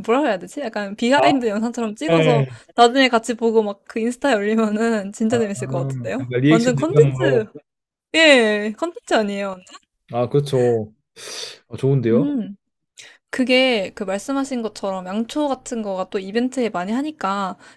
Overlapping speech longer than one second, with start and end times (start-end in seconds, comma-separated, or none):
6.2-7.4